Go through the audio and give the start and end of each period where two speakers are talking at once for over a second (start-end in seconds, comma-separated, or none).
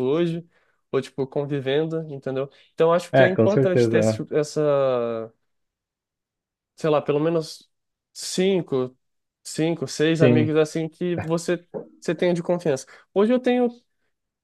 3.1-4.3